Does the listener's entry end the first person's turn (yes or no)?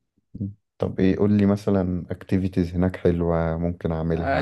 yes